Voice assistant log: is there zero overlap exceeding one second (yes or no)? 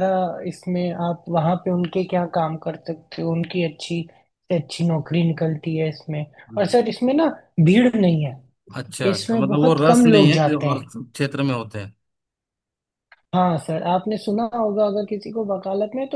no